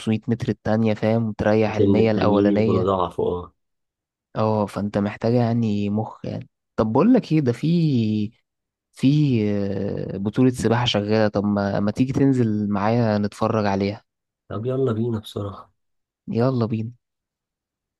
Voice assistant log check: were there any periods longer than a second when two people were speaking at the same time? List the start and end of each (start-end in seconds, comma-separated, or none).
1.7-2.9